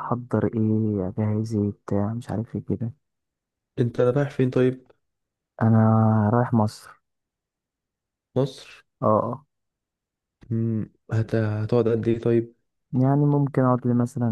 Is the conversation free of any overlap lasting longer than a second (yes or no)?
yes